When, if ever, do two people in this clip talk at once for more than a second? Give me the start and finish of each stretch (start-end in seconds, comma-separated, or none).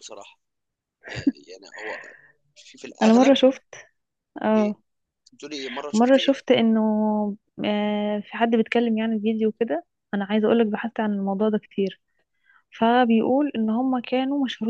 none